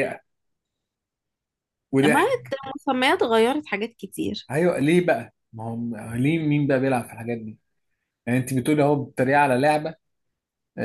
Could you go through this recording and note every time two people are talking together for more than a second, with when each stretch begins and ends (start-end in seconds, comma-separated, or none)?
none